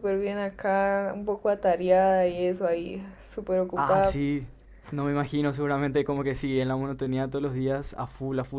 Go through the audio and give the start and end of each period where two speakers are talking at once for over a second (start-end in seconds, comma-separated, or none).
none